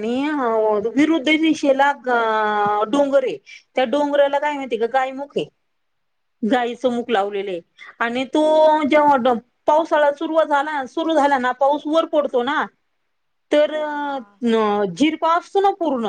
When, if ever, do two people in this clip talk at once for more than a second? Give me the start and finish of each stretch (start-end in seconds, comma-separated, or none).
none